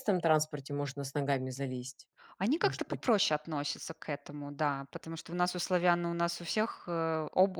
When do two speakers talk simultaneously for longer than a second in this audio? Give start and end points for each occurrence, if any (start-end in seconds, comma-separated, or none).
none